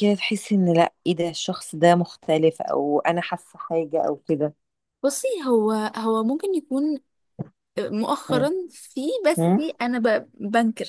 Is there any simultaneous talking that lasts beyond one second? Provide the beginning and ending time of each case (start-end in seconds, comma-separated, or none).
none